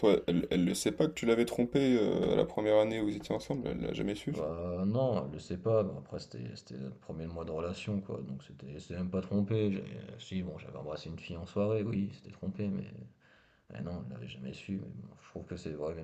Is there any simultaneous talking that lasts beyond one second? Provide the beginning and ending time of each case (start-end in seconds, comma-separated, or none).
none